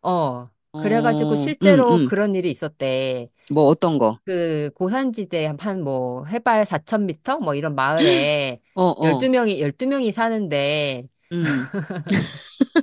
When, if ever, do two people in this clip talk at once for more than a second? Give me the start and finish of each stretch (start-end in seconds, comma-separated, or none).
0.7-2.1